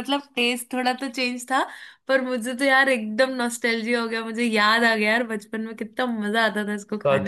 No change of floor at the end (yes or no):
no